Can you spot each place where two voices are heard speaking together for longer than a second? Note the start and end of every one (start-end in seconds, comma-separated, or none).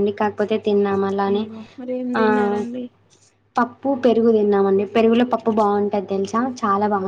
none